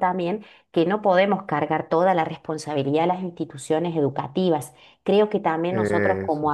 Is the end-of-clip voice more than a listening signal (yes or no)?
no